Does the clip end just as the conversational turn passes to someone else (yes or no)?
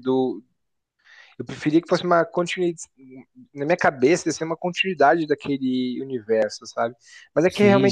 no